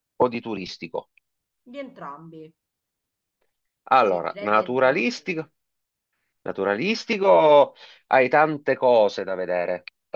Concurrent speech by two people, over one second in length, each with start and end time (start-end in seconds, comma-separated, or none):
4.0-5.3